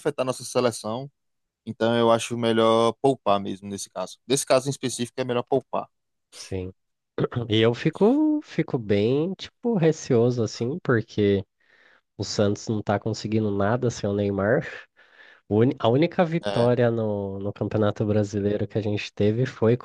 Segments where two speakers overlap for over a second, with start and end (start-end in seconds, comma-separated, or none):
none